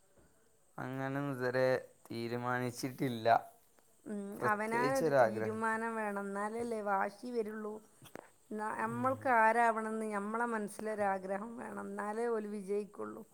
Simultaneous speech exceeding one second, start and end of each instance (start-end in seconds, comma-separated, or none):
4.4-5.6